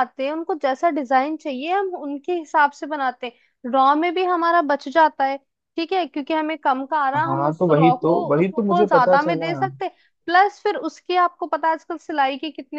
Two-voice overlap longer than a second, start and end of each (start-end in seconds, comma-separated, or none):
7.2-9.5